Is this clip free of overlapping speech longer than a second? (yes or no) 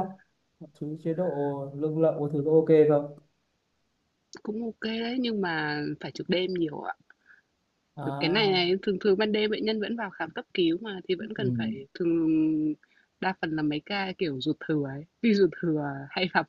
yes